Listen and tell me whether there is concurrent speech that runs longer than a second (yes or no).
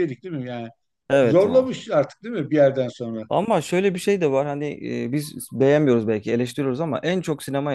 no